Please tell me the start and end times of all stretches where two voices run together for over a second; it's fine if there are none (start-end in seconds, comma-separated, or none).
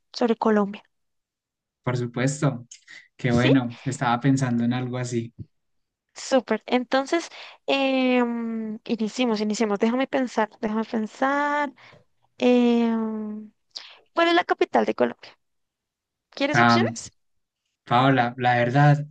none